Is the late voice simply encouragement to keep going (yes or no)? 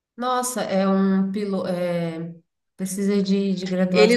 no